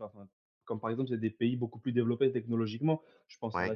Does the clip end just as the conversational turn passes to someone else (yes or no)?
no